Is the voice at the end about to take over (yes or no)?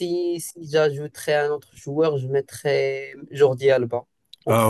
yes